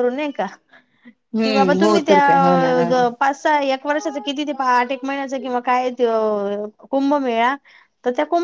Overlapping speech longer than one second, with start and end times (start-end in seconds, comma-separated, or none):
1.4-2.9